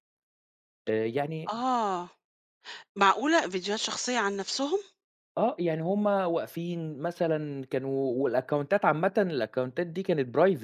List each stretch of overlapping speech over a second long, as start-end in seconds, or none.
none